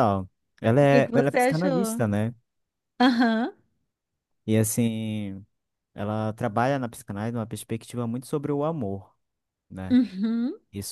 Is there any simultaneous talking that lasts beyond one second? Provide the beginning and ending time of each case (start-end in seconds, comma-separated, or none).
0.8-2.0